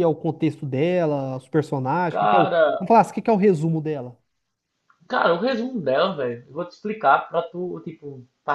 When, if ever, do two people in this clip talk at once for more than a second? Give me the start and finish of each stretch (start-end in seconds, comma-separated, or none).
none